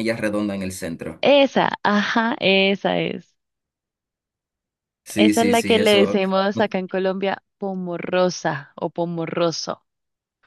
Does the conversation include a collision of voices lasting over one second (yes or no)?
yes